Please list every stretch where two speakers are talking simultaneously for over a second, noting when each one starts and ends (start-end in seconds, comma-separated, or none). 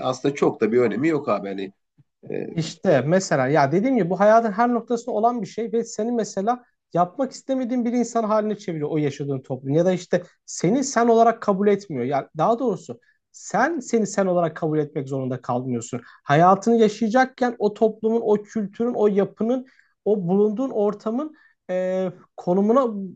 none